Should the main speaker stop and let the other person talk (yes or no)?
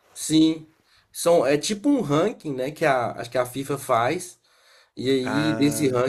no